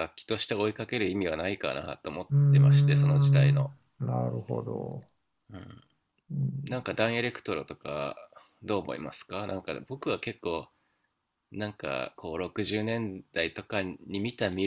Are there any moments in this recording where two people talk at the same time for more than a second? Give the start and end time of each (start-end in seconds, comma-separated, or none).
2.3-3.6